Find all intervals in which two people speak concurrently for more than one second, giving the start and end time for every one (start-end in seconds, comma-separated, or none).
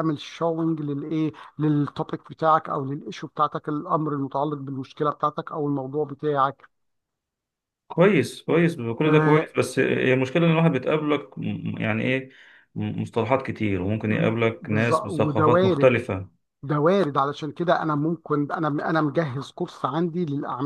14.6-15.9